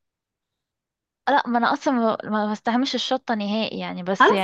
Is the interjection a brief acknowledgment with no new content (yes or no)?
no